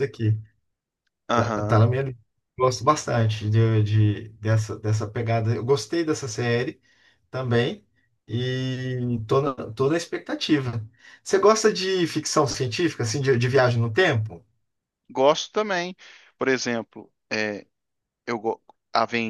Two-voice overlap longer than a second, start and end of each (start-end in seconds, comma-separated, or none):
none